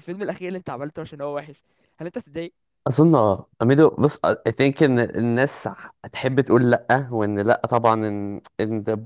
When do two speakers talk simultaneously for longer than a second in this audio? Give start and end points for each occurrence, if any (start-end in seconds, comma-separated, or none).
none